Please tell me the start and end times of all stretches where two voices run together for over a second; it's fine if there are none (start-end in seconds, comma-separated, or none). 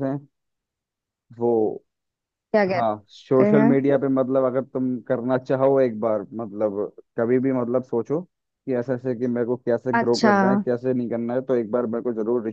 2.7-3.9